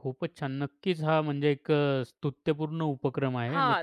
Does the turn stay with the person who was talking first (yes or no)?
no